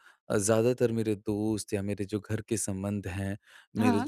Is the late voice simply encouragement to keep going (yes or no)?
yes